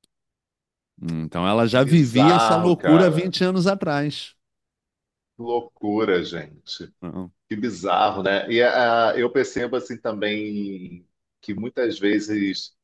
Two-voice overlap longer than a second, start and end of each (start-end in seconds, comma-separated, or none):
1.7-3.3